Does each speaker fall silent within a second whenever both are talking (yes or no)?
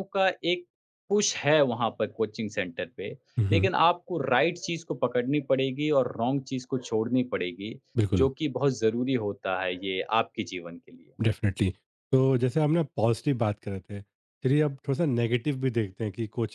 yes